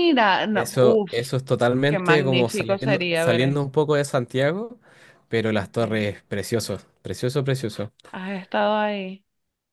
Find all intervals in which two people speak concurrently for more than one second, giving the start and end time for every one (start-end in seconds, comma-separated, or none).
1.9-3.7